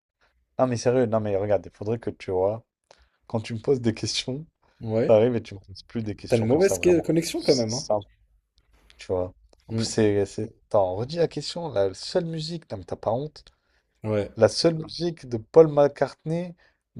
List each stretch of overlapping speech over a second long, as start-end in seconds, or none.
6.3-7.8